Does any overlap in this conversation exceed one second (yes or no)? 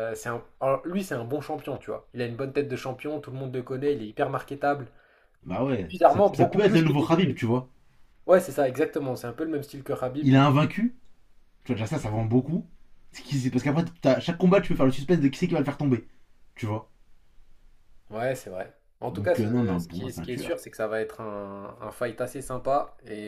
yes